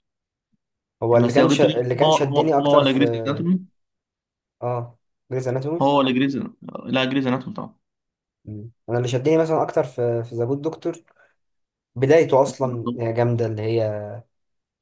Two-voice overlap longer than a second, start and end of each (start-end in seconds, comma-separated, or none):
1.2-3.0